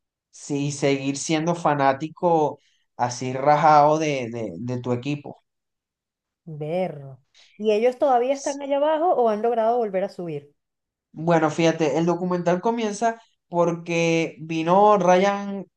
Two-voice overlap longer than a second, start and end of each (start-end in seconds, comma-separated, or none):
none